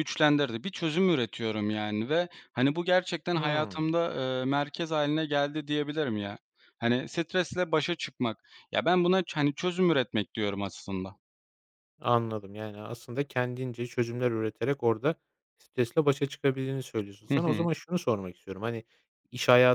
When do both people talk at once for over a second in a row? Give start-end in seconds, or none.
none